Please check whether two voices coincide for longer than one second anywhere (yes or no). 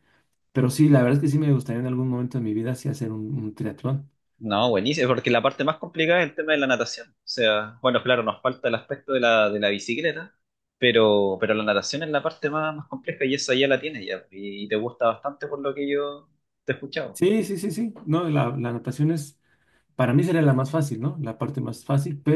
no